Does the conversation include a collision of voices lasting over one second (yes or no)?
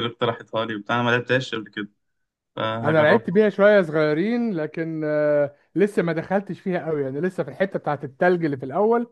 no